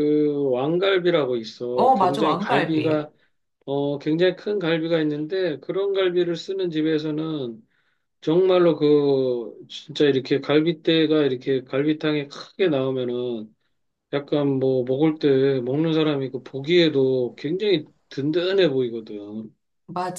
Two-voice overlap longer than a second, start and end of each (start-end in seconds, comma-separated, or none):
1.7-3.1